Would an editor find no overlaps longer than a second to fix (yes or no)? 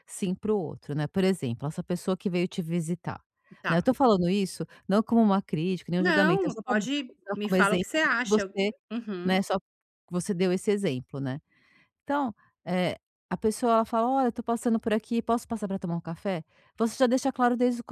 no